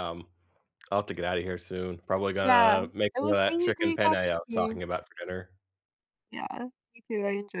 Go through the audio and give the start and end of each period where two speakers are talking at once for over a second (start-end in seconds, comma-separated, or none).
2.4-4.8